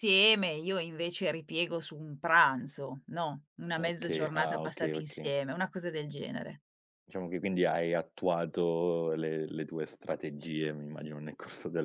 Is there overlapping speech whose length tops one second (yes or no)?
yes